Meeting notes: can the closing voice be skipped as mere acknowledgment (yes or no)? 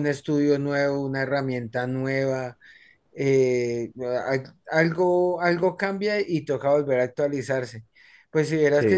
yes